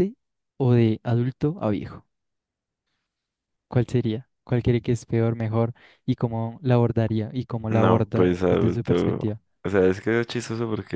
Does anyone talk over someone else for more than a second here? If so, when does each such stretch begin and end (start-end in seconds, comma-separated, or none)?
7.7-9.2